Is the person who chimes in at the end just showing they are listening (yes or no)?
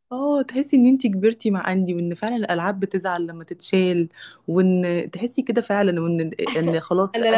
no